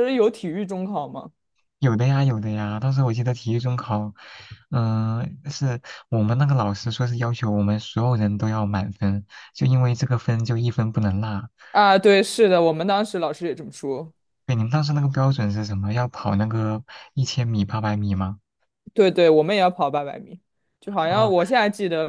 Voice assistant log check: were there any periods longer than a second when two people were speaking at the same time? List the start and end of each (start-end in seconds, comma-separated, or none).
none